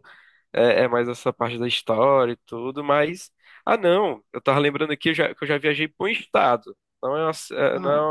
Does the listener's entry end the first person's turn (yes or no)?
no